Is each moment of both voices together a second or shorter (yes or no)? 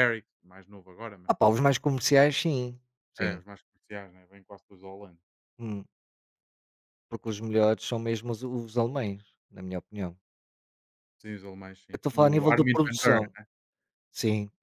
no